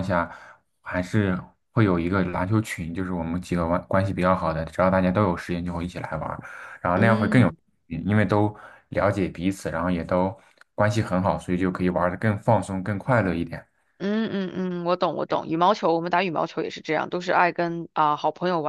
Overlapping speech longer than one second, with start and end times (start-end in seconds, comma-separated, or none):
none